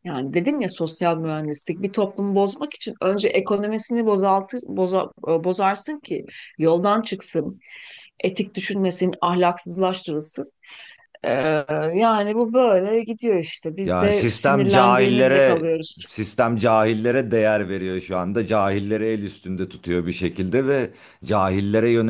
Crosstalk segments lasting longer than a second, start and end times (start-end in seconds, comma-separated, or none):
13.8-15.6